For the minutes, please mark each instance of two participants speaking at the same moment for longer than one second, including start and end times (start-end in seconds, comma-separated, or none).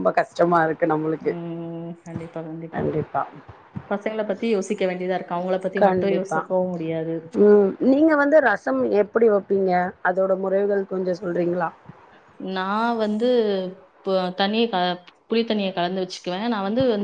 none